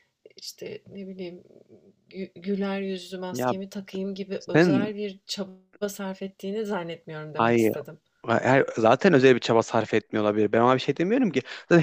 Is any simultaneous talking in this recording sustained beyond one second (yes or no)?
no